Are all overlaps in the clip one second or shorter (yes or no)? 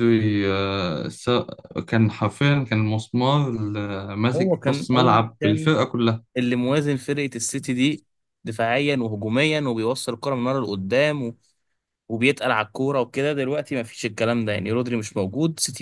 no